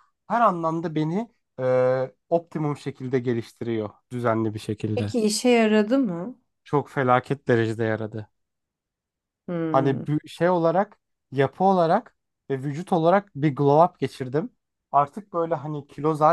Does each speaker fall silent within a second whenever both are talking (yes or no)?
yes